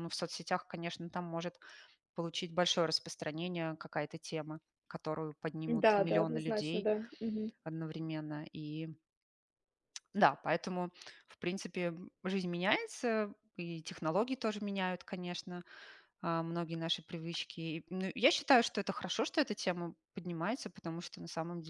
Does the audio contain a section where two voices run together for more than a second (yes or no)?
yes